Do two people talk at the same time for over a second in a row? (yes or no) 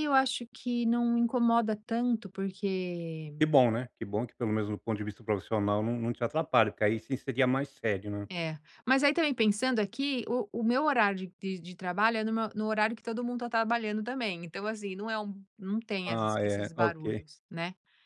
yes